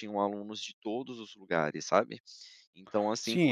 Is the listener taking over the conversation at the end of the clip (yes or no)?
yes